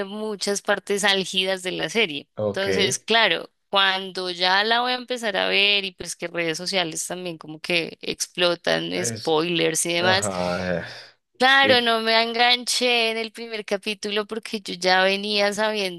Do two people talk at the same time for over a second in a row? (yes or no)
no